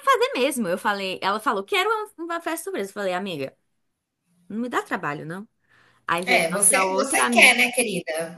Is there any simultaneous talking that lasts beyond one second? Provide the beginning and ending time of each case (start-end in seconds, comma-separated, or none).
6.2-7.6